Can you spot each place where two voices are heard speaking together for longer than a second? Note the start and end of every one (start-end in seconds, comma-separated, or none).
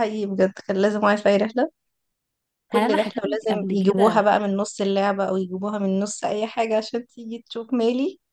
2.7-4.2